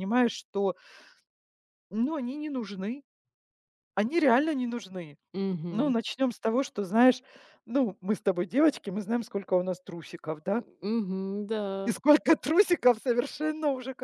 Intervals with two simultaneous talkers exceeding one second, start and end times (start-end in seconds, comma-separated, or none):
none